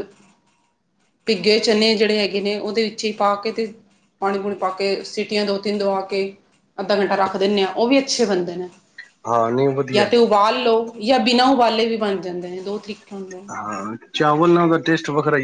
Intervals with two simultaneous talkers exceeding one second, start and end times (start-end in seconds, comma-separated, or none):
none